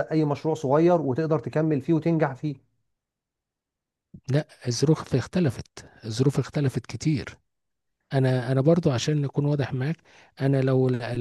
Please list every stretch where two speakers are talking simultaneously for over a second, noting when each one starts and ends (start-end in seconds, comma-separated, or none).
none